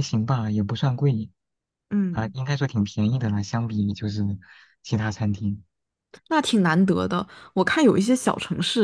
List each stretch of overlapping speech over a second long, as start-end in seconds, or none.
none